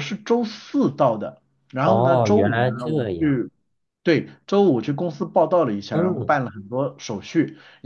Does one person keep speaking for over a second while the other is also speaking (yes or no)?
yes